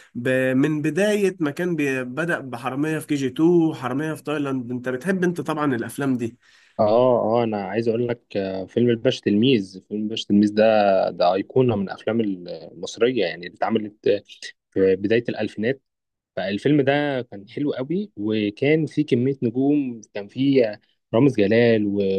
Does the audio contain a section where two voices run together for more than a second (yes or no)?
no